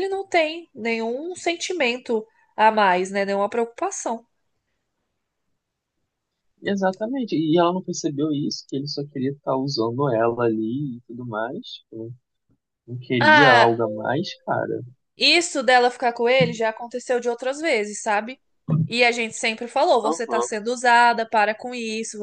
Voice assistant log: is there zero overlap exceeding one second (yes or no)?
yes